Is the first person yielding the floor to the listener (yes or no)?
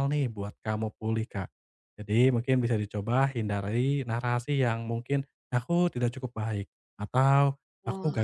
no